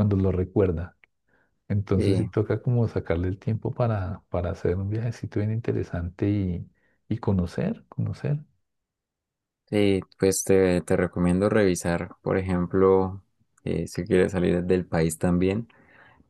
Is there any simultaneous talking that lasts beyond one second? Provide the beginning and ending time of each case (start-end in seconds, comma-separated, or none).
none